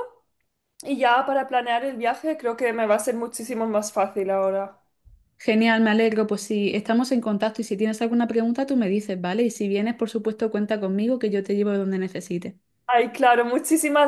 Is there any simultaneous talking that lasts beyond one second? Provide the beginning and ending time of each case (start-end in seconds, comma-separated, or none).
none